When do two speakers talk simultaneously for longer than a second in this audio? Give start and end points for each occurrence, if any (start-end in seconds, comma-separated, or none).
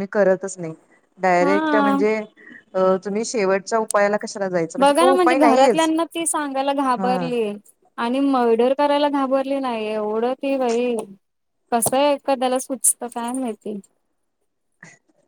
none